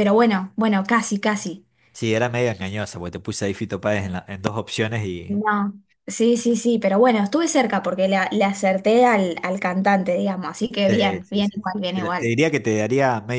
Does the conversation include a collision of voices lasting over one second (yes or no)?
yes